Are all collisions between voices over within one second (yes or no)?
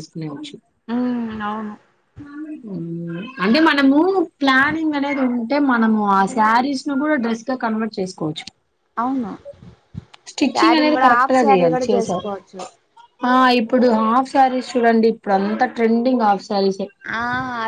no